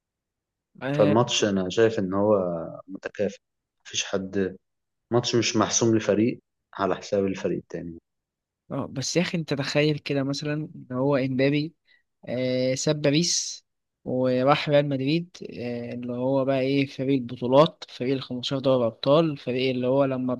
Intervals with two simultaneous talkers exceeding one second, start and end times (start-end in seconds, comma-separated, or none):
none